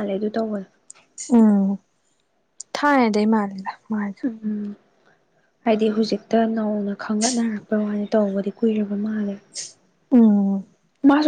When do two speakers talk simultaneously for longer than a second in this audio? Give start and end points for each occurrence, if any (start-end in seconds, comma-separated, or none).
none